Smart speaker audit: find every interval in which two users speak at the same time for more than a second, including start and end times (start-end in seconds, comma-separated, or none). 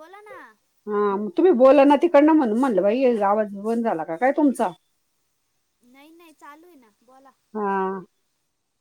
none